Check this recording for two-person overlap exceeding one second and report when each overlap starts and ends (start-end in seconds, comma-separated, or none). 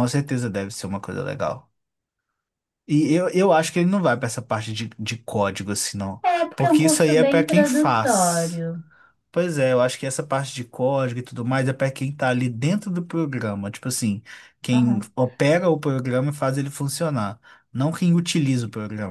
6.2-8.6